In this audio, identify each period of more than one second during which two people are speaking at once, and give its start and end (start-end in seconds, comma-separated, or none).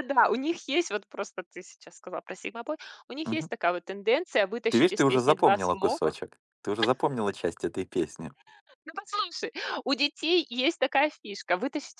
4.7-6.2